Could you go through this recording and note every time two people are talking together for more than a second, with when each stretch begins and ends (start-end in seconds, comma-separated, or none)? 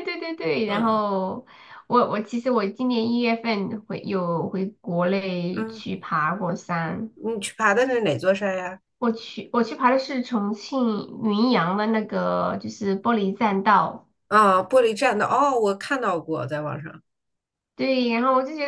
none